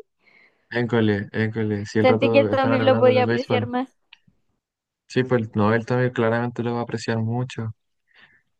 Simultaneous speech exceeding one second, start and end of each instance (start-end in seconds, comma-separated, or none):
2.0-3.7